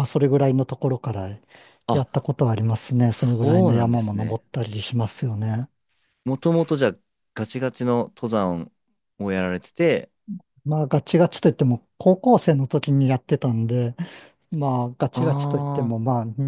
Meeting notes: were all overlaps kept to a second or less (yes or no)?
no